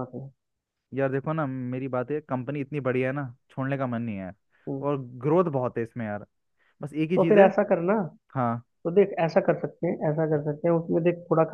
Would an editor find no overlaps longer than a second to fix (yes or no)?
yes